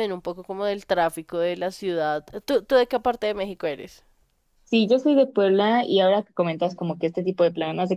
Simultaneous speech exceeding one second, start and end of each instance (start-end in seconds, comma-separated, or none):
none